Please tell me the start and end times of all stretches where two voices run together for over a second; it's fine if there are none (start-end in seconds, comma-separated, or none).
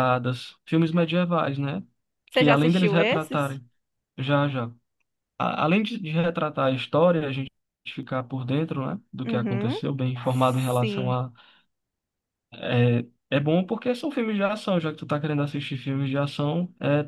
2.3-3.6